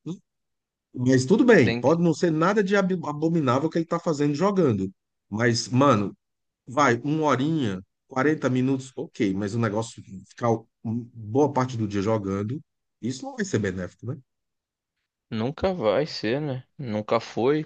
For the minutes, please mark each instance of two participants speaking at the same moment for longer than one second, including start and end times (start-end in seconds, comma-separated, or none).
none